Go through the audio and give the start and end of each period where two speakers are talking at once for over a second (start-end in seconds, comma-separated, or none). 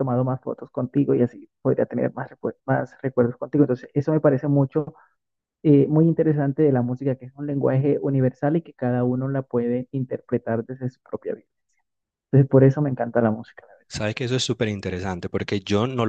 none